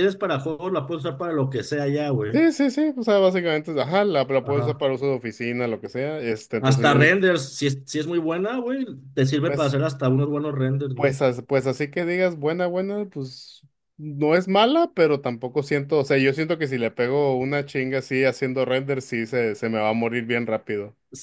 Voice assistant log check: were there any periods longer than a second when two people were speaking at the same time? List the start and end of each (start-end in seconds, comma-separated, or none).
none